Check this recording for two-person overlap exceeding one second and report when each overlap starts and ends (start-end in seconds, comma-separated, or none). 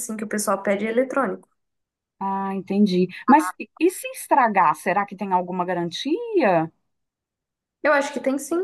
none